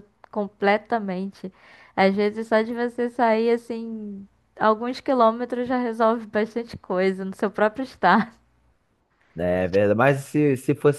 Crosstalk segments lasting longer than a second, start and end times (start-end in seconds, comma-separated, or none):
none